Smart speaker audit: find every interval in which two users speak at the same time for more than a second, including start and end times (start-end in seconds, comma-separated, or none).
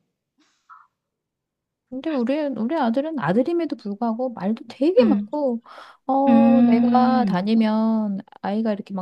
6.3-7.5